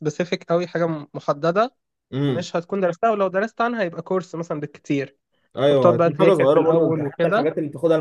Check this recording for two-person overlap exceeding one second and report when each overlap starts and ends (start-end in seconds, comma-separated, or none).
5.7-7.5